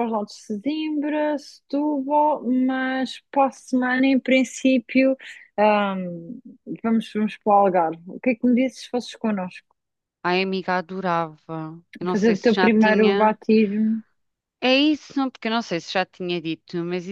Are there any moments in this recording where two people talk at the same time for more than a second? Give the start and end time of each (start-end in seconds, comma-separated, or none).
12.1-13.4